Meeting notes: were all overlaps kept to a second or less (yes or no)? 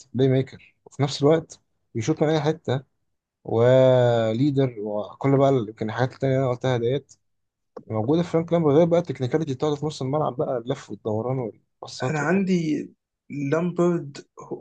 yes